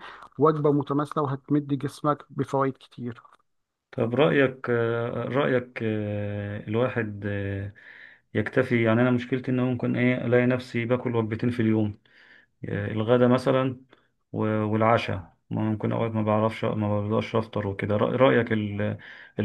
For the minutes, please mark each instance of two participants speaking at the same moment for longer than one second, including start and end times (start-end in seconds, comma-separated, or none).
none